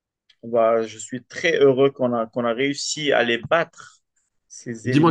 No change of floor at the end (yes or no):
no